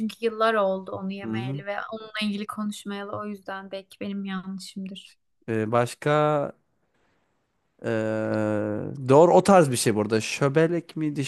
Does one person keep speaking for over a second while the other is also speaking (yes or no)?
no